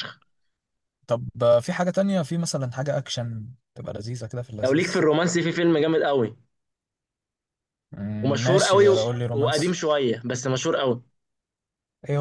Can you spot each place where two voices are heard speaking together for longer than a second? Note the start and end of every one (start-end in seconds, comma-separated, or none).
8.2-9.8